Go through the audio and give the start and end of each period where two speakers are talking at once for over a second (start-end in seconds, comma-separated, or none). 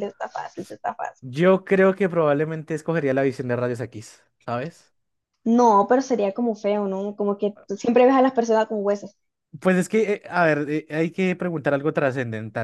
none